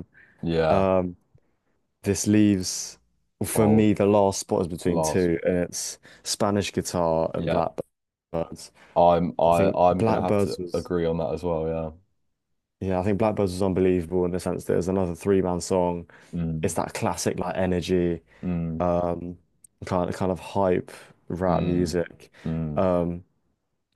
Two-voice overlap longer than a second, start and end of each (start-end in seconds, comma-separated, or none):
9.5-10.9